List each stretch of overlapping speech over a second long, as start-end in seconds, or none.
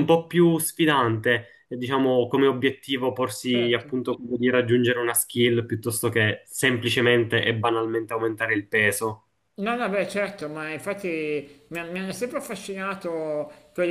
none